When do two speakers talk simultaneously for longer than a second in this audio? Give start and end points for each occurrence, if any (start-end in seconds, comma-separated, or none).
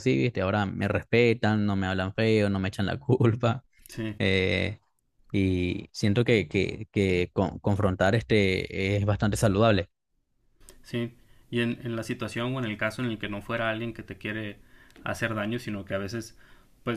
none